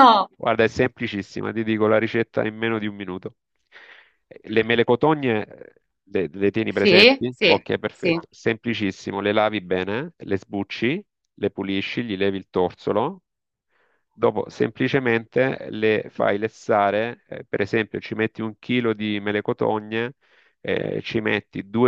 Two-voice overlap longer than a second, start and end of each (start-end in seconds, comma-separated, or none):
6.7-8.2